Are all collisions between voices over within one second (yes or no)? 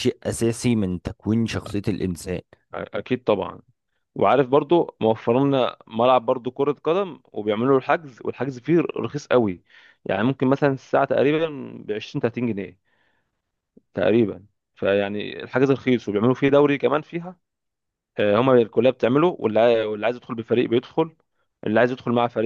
yes